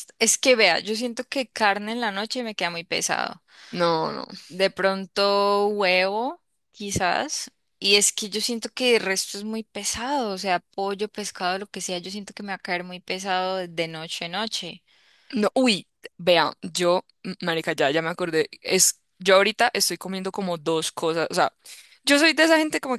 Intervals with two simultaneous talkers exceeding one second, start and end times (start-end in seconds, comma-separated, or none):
none